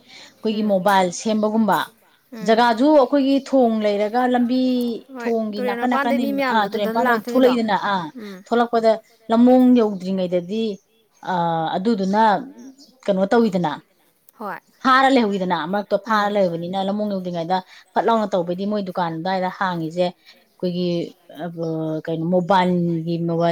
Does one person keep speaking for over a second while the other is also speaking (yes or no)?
yes